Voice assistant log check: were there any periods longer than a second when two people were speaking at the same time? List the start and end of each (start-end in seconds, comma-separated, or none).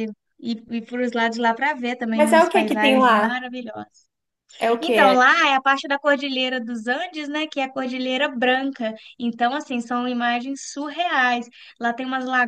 2.1-3.4